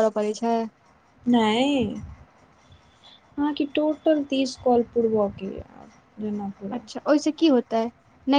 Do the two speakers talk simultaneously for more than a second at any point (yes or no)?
no